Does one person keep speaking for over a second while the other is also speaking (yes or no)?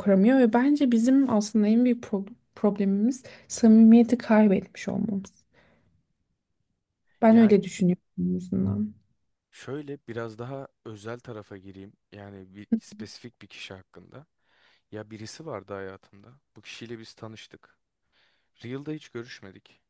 no